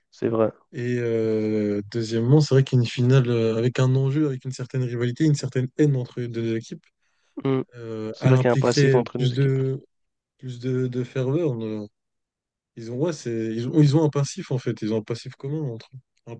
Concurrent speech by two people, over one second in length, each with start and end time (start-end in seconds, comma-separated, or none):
8.1-9.6